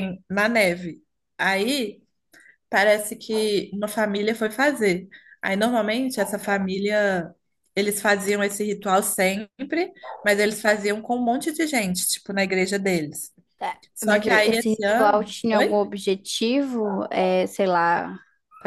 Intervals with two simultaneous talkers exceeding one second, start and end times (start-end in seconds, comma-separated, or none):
13.9-15.8